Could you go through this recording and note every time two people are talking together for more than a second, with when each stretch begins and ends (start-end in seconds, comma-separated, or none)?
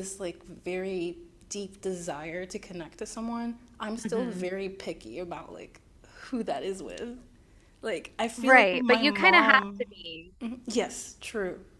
8.3-9.8